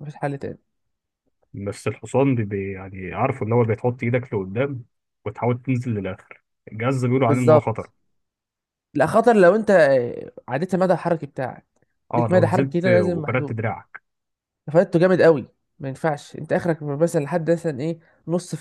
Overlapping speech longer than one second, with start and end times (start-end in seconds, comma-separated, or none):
12.1-13.6